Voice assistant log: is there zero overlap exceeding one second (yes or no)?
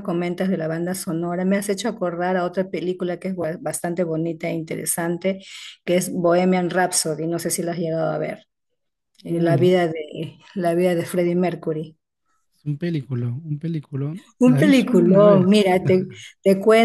no